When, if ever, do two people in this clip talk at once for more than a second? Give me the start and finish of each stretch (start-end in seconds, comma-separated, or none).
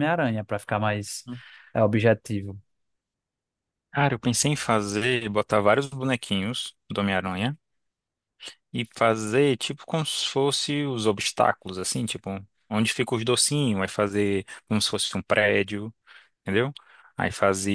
none